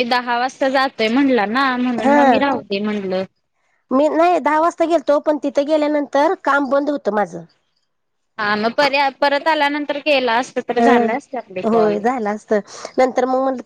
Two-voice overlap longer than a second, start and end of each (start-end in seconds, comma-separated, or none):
10.8-12.0